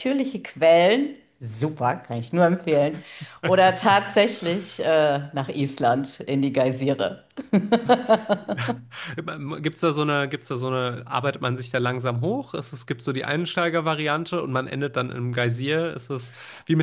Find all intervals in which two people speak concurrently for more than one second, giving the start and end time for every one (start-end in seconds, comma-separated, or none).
none